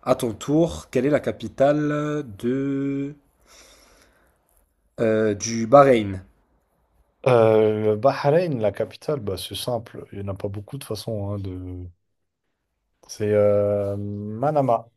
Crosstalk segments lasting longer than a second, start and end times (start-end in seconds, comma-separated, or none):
none